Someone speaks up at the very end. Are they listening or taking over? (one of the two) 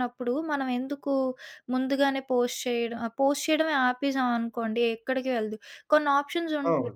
listening